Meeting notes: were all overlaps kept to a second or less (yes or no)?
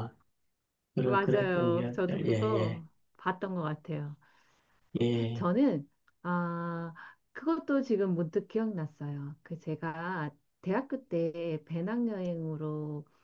no